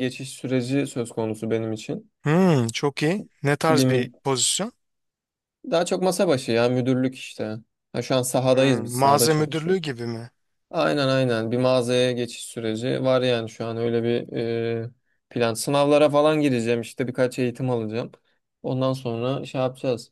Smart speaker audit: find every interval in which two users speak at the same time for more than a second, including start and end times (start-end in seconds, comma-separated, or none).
8.5-9.8